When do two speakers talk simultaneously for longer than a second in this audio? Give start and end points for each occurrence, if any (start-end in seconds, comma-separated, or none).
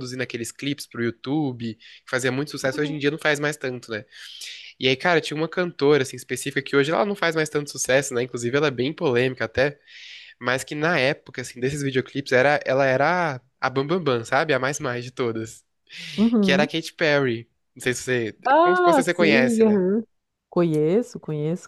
18.4-19.8